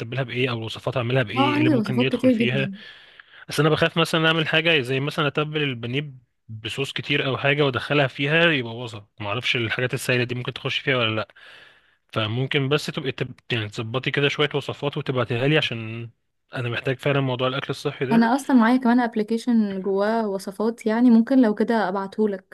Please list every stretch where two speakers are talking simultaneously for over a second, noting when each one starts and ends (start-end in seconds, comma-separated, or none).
1.4-2.7